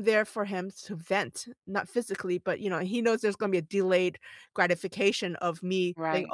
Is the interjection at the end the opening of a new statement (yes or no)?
no